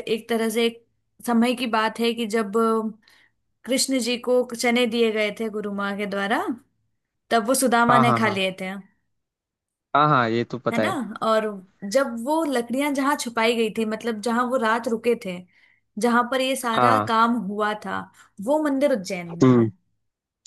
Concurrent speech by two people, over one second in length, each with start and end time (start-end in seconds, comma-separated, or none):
none